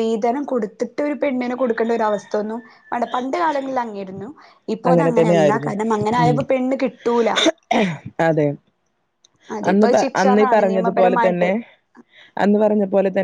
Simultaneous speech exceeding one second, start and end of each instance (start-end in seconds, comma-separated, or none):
9.7-11.5